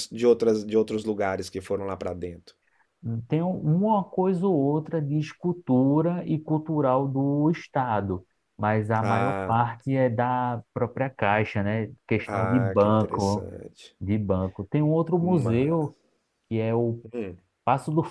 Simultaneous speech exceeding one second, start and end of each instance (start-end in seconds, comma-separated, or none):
12.3-13.5